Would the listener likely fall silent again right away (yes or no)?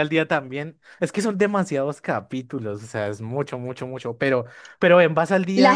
no